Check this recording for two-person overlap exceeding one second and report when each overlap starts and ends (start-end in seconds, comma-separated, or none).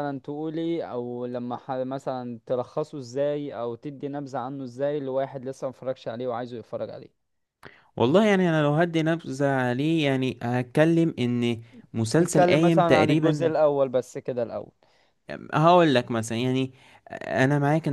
12.2-13.5